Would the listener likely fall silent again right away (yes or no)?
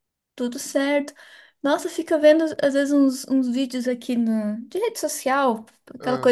yes